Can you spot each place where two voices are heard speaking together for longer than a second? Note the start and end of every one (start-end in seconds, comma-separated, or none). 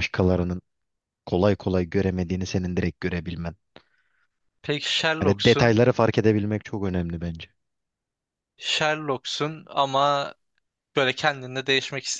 none